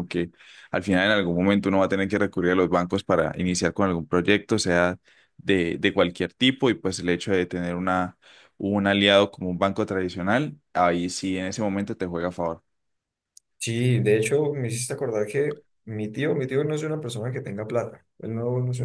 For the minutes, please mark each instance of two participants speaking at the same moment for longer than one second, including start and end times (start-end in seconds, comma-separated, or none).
none